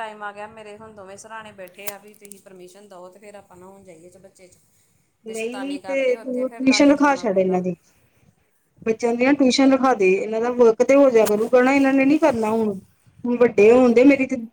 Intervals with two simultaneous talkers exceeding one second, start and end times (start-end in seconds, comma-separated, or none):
5.3-7.6